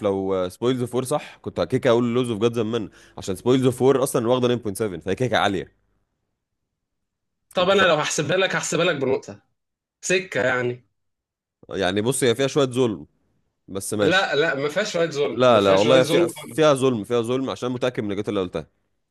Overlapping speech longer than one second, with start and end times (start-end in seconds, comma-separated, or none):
15.3-16.8